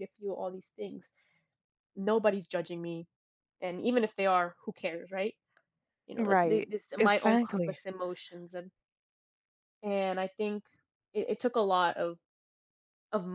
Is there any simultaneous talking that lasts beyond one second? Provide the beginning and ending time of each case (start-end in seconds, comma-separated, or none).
6.2-7.8